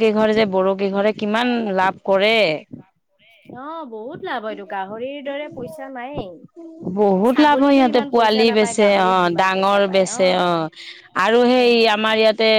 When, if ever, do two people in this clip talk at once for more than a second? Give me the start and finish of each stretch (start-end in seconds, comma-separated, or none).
7.3-10.1